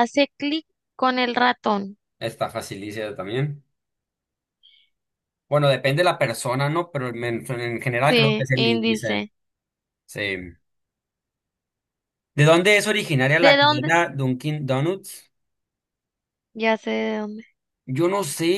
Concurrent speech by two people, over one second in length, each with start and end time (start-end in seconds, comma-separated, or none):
8.1-9.3